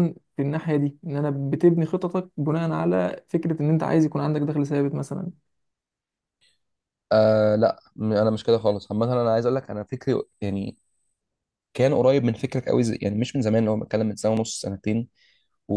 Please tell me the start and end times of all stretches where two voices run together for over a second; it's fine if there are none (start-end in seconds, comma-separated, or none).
none